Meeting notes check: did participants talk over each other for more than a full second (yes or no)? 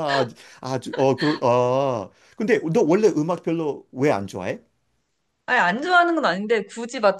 no